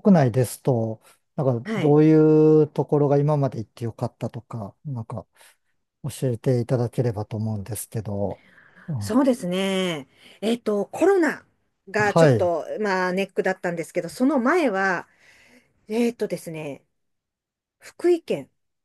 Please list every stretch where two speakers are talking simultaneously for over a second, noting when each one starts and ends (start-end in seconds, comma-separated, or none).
none